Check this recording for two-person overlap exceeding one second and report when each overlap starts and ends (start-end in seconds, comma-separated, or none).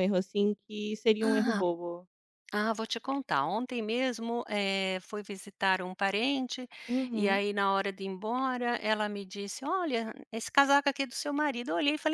none